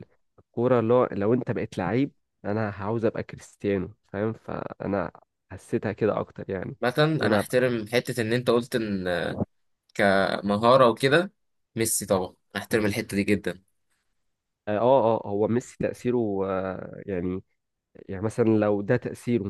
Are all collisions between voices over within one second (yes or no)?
yes